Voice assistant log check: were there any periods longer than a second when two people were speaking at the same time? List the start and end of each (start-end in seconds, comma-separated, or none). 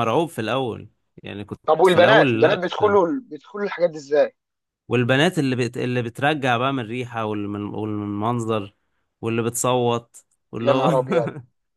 1.7-3.0